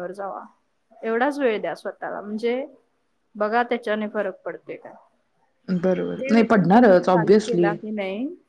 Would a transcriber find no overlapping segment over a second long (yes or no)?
no